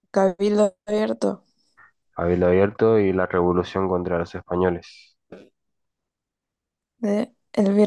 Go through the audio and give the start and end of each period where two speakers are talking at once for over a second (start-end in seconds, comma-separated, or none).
none